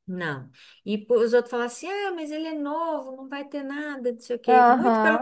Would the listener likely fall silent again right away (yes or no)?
yes